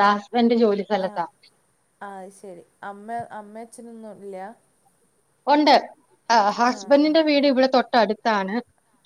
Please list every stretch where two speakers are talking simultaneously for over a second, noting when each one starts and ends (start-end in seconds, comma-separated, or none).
none